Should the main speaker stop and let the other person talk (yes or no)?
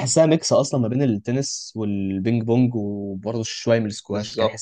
no